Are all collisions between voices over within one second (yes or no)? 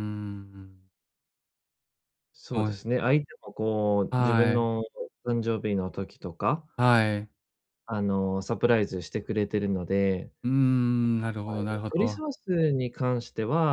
yes